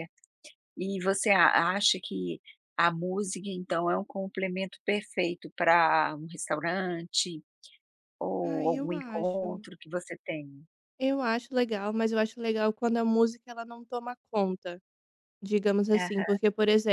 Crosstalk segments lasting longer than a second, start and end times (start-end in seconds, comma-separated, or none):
8.4-9.7